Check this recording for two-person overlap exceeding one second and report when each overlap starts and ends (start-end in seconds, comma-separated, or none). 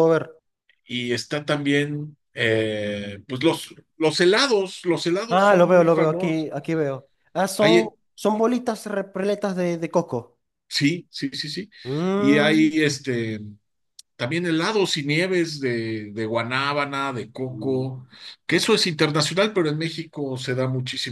5.3-6.5